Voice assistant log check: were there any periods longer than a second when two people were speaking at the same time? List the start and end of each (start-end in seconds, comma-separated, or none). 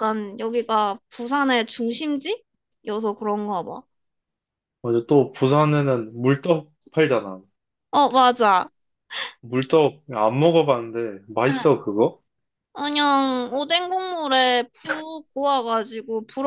none